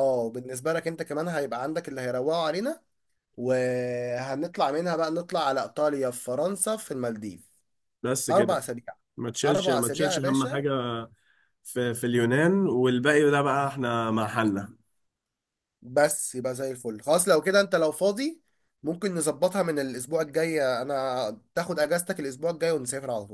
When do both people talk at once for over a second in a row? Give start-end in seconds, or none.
9.4-10.6